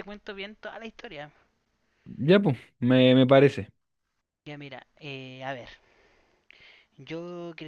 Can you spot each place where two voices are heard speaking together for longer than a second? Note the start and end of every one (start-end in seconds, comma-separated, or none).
none